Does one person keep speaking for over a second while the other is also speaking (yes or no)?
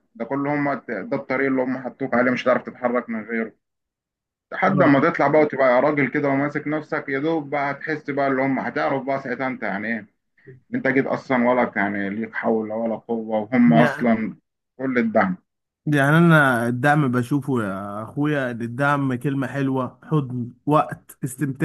no